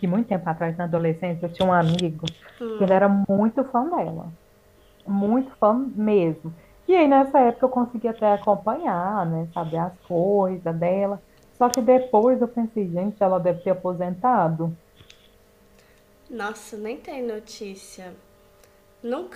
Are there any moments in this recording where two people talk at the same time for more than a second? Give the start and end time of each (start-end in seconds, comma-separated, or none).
none